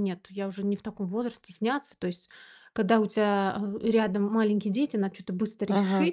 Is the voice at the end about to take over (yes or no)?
no